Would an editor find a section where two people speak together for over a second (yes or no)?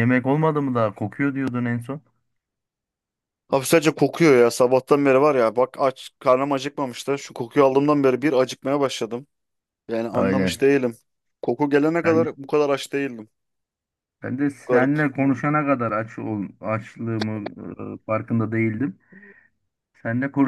no